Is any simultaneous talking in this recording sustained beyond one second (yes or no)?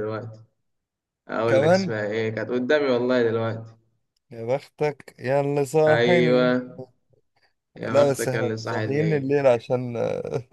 yes